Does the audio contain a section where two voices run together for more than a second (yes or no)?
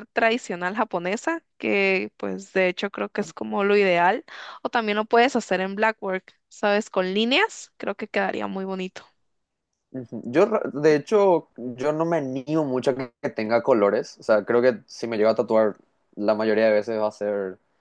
no